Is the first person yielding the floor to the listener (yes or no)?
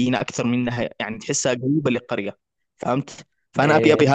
no